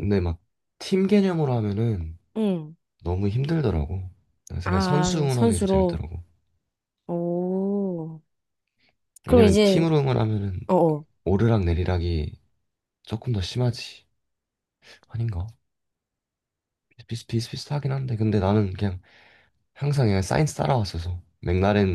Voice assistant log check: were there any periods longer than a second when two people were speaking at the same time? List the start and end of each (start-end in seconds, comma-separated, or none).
4.6-6.0